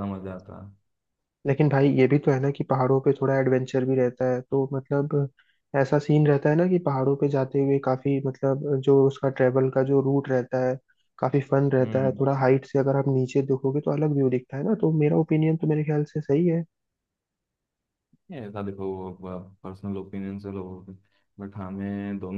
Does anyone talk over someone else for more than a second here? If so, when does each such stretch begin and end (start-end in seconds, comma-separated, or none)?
none